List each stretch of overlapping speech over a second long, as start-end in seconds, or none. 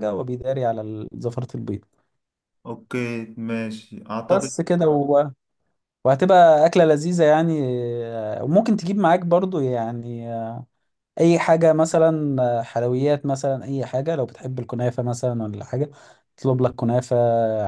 none